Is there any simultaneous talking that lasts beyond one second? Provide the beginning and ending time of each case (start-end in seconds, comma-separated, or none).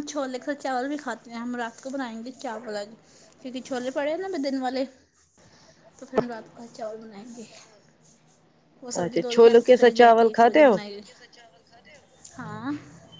9.0-10.8